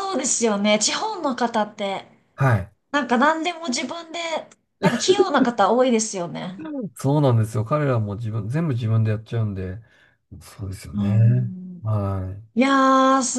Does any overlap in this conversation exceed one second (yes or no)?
no